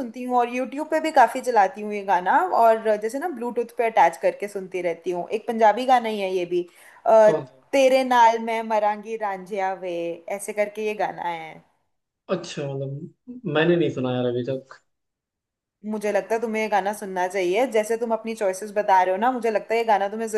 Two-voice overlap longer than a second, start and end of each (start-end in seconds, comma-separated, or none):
none